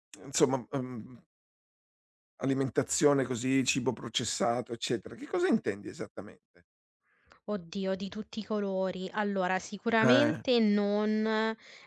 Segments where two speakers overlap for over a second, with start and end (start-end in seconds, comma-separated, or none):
none